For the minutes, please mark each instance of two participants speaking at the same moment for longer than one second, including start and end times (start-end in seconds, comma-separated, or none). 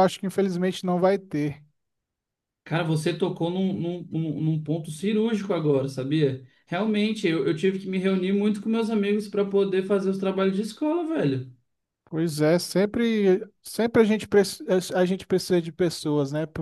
none